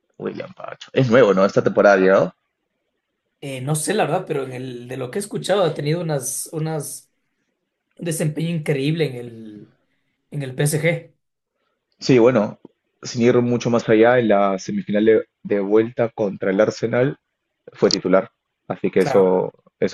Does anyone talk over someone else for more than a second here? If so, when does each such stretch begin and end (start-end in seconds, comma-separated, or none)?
none